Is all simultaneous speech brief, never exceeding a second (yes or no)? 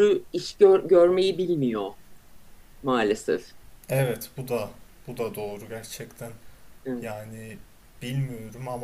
yes